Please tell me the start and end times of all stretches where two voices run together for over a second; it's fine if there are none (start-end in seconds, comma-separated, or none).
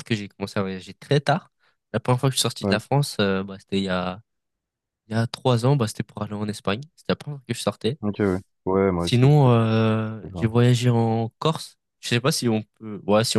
none